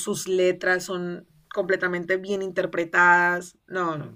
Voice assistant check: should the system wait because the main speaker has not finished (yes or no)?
no